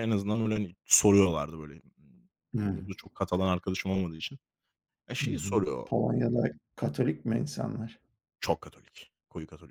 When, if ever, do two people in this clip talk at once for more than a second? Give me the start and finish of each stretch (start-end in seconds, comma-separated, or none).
none